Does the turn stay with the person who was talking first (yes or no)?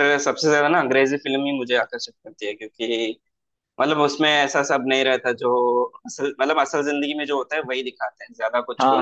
no